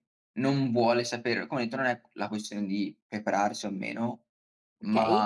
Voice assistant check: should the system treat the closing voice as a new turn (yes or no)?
no